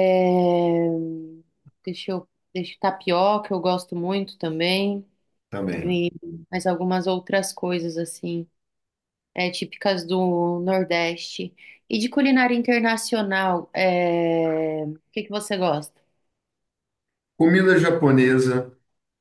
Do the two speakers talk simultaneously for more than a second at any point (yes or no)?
no